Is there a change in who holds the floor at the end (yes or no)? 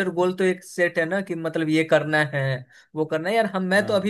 no